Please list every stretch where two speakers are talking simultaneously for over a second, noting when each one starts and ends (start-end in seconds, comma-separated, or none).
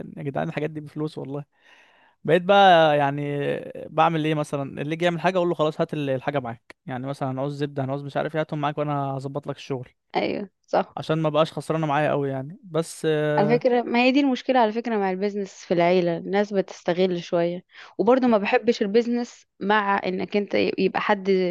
none